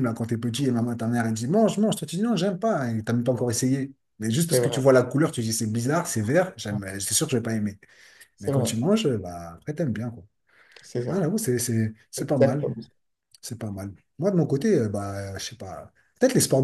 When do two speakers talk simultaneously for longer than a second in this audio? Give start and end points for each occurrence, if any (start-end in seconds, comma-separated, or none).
none